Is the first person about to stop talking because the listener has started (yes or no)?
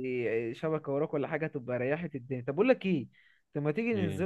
no